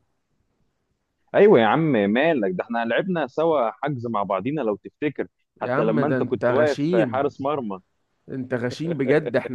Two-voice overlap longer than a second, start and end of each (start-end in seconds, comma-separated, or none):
5.6-7.3